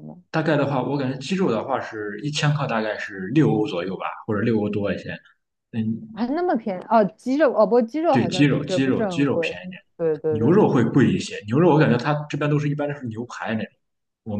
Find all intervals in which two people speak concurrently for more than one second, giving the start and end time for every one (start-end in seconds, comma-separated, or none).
8.1-9.5